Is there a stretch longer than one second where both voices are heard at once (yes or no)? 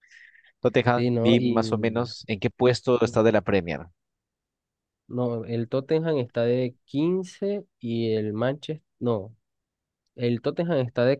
yes